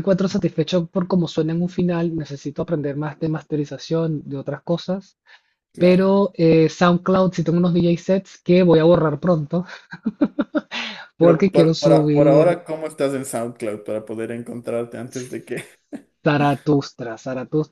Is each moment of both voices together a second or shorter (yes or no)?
no